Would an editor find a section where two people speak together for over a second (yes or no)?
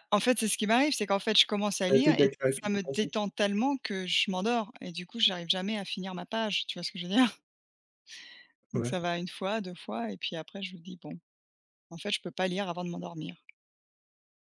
yes